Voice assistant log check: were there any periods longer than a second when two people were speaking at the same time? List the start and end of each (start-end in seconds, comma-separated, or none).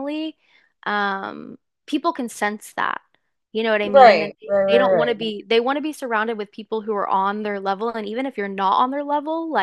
3.8-5.3